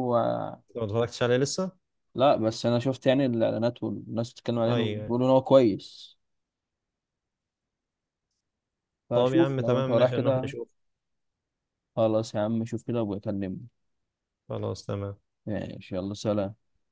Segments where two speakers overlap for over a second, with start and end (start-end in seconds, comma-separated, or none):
9.1-10.5